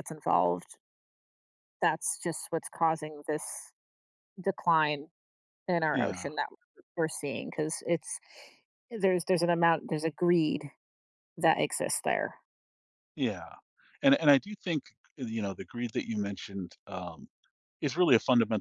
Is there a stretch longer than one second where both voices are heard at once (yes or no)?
no